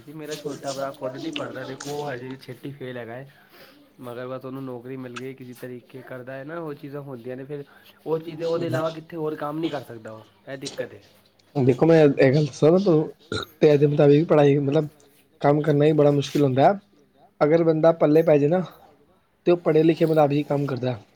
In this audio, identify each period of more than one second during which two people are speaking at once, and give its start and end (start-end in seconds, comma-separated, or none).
none